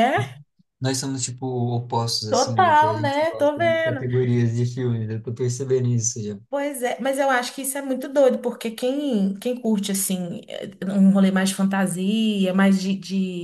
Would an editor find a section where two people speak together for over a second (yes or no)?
yes